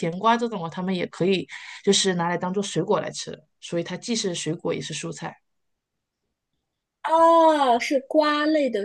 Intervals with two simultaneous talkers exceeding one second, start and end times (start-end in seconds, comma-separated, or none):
none